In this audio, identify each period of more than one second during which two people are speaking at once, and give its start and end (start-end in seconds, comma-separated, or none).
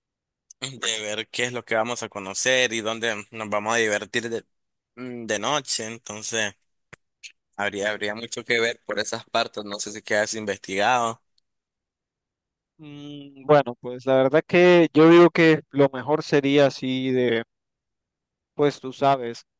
none